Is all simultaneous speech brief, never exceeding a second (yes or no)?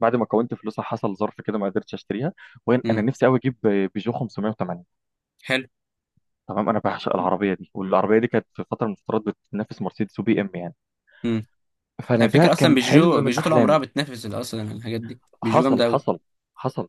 no